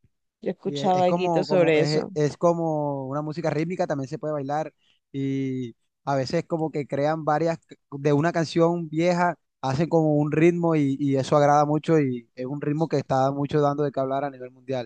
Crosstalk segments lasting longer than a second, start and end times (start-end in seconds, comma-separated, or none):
0.6-2.1